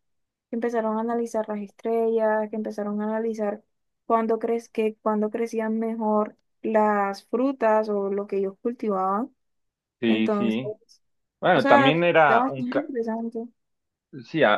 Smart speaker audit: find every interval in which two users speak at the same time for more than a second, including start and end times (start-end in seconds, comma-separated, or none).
11.5-12.9